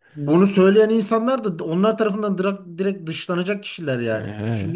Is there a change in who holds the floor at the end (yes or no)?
no